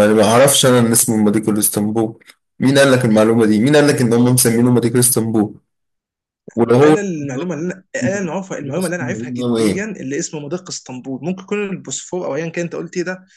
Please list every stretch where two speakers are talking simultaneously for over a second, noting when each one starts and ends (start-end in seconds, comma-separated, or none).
8.0-9.8